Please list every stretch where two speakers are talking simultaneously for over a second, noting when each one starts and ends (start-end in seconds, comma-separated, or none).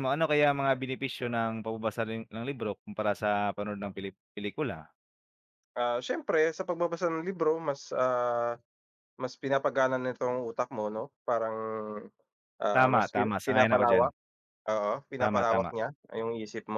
12.7-14.1